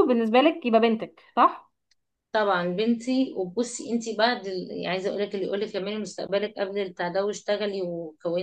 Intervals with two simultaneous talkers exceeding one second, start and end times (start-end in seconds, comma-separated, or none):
none